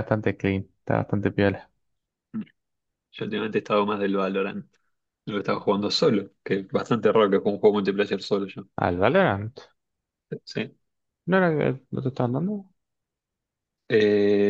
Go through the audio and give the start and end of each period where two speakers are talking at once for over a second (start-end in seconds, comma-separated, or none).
none